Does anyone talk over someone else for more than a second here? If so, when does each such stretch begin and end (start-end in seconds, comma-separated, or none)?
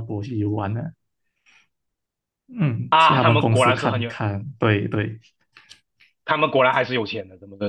2.9-4.1